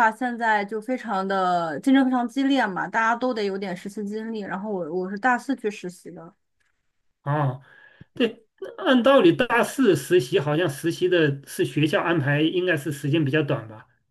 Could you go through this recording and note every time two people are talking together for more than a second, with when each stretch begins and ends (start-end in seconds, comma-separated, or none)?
none